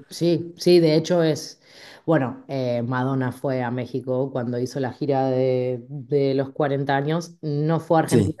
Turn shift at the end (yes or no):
no